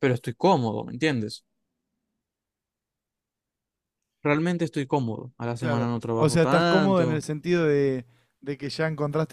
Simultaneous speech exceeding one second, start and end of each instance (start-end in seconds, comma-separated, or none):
5.6-7.2